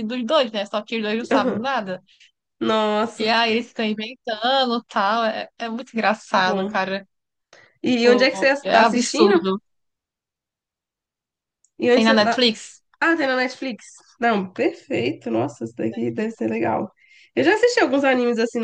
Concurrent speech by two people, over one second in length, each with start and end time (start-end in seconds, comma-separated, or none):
8.0-9.4